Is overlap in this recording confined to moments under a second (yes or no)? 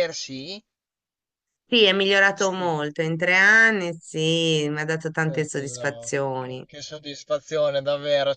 no